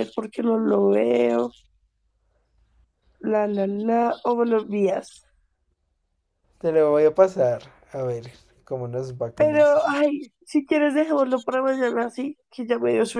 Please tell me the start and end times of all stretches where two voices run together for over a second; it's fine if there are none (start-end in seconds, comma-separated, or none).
none